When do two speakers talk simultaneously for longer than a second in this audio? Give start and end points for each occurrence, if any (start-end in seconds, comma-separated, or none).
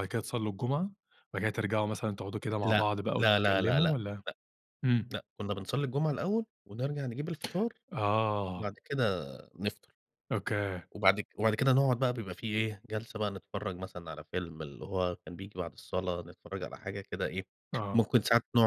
2.6-4.0